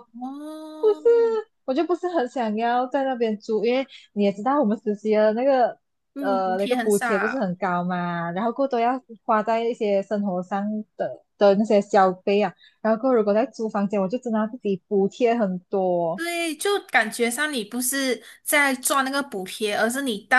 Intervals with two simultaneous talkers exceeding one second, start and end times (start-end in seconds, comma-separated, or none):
6.2-7.5